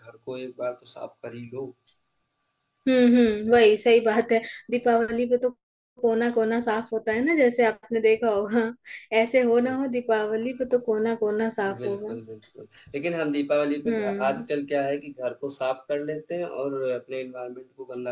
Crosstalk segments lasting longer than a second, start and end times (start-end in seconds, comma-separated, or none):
none